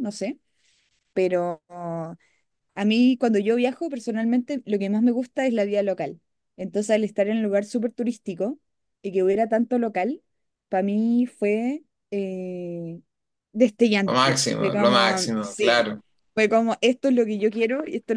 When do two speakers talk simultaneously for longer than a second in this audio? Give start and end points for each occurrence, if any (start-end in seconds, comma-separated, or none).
14.0-15.9